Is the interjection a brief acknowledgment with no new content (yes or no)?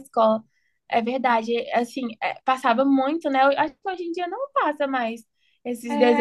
no